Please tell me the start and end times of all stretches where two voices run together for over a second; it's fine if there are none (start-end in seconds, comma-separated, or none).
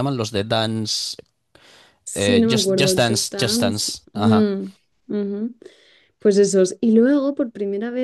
2.1-4.5